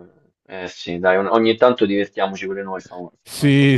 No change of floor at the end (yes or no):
no